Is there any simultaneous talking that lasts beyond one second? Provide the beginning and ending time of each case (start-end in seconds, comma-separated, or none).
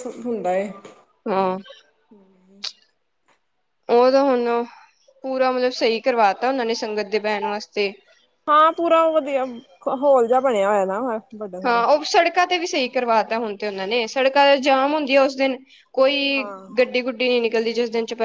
none